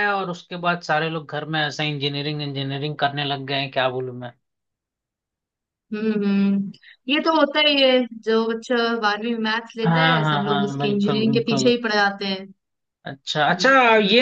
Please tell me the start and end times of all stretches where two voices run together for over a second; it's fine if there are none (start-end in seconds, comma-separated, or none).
9.8-11.7